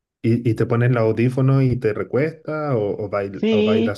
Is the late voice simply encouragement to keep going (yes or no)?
no